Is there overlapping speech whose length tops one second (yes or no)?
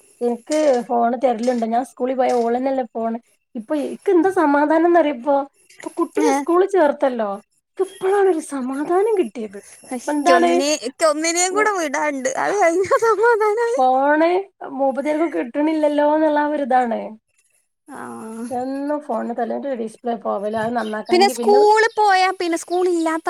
no